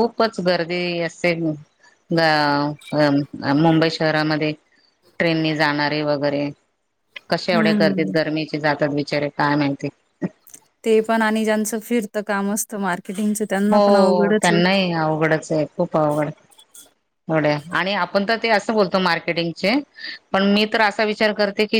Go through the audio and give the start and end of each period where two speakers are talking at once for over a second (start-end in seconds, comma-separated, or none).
none